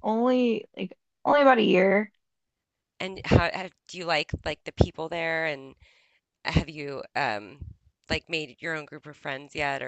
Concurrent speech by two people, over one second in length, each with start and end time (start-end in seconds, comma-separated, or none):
none